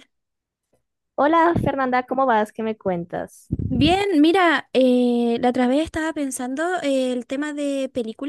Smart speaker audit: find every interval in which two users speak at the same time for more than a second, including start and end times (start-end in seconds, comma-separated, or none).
none